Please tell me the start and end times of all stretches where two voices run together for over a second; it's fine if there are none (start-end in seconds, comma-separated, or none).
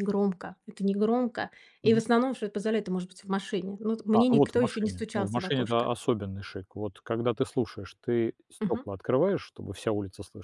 4.1-5.9